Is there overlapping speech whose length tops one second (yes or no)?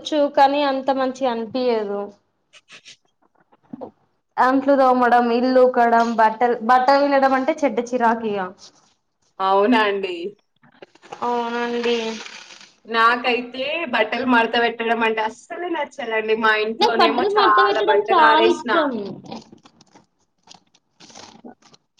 yes